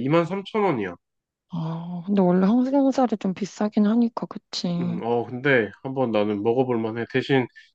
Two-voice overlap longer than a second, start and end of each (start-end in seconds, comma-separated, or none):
none